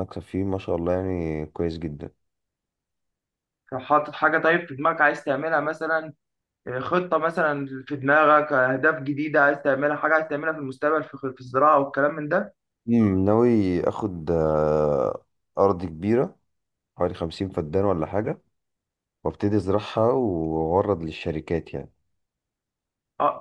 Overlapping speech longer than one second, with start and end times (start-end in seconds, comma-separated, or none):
none